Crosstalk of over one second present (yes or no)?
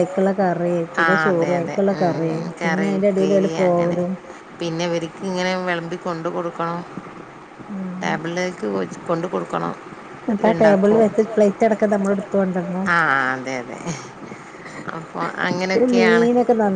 yes